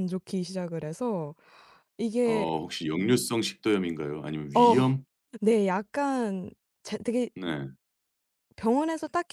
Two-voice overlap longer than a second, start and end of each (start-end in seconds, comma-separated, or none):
none